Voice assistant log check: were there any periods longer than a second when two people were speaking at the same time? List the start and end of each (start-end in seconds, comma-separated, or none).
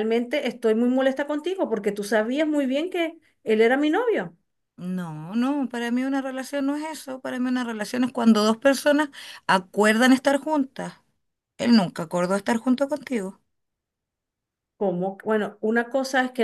none